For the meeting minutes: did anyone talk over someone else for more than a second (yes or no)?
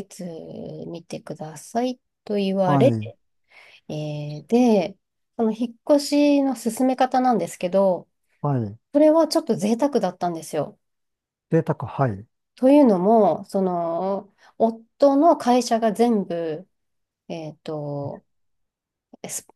no